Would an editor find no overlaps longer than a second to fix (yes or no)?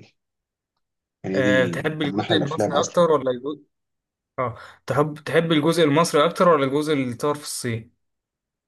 no